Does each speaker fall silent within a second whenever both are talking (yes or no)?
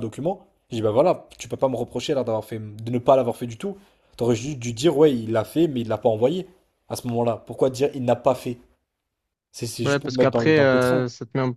no